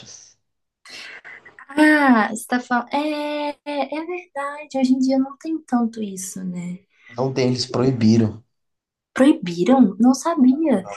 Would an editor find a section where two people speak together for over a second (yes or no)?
no